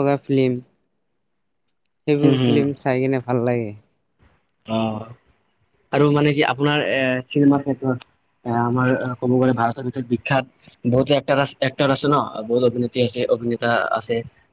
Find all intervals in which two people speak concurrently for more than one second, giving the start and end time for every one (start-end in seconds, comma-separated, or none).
none